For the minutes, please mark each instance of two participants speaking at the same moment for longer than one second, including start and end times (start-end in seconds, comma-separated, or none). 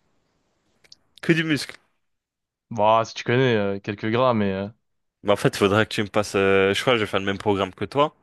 none